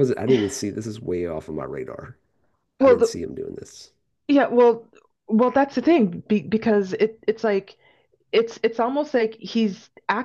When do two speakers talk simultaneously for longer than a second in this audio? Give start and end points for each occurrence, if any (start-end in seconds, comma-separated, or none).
none